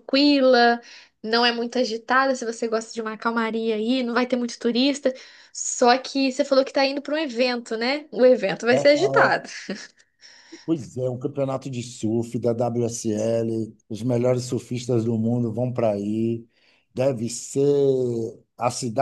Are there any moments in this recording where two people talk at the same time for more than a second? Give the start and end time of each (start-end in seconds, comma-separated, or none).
none